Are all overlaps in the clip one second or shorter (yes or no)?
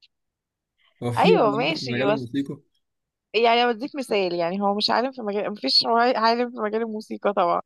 no